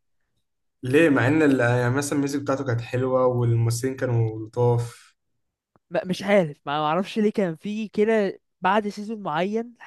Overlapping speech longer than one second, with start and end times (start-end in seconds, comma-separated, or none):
none